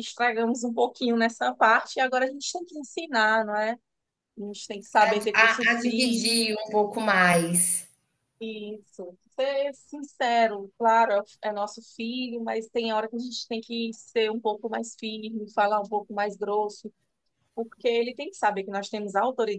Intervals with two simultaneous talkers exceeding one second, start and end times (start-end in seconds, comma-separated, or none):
5.0-6.5